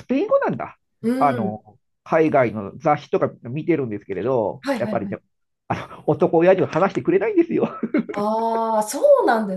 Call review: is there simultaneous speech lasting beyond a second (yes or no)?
no